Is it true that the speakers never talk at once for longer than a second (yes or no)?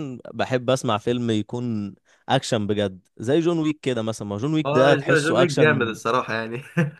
no